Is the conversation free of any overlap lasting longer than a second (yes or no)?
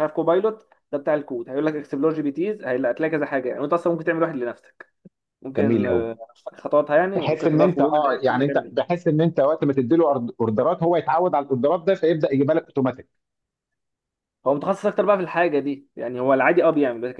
no